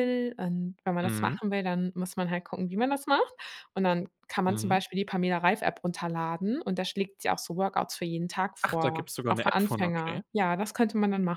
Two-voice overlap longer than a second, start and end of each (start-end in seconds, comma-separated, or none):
8.6-10.2